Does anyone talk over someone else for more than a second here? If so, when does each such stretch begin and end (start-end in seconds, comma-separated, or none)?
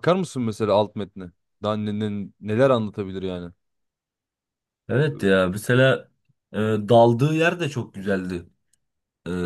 none